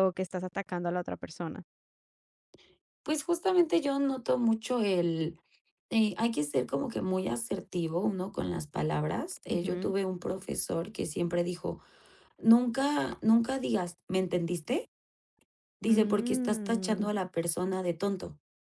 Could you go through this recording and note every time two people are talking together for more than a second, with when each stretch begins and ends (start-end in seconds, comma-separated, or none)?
15.9-17.1